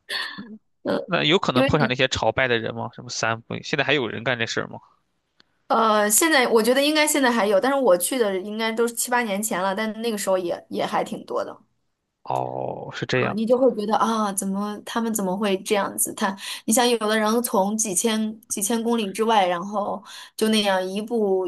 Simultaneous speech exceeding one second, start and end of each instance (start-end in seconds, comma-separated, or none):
none